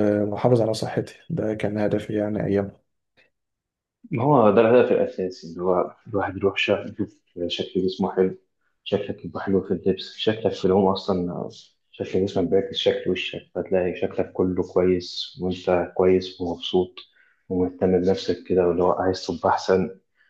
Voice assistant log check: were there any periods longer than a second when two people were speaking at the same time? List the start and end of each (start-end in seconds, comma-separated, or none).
none